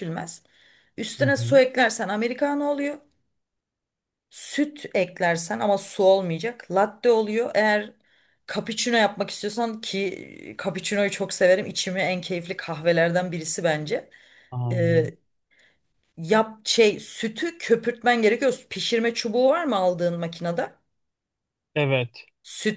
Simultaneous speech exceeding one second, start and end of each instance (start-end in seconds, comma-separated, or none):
none